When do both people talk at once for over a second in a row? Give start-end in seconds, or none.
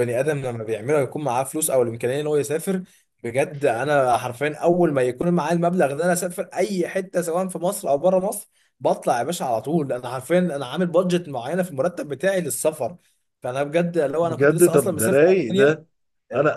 14.2-15.9